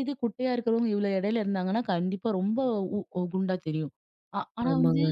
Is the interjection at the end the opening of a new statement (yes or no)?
no